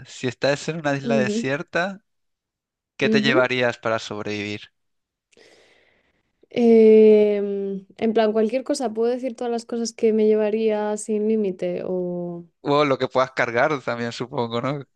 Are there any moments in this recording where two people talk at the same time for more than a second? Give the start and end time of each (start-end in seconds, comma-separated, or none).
none